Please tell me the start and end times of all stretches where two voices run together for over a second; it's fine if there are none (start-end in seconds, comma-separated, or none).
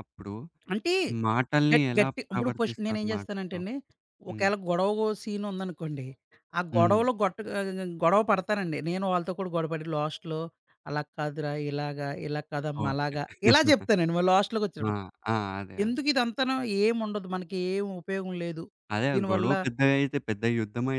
1.7-3.6